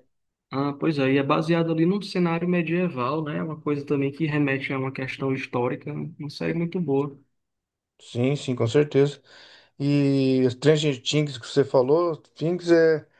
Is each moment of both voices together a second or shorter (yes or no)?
yes